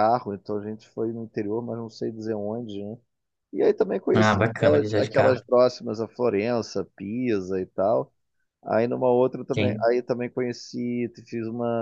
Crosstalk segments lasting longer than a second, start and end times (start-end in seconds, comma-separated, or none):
4.1-5.4